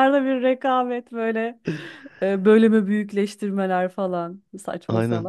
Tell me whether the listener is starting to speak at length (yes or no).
yes